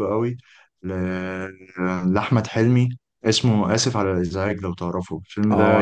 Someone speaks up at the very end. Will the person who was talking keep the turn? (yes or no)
no